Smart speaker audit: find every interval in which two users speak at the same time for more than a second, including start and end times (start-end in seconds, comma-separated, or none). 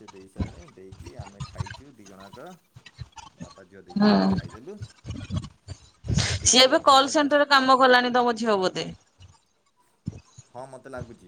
6.2-7.6